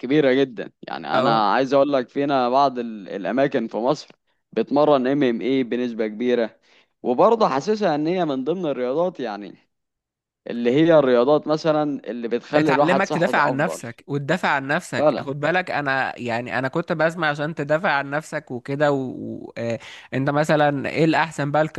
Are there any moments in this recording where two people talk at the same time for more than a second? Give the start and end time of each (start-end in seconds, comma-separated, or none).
12.6-13.8